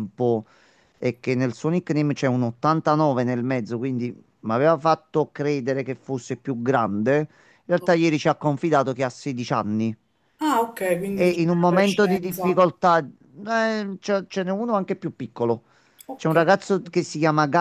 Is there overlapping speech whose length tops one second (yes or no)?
yes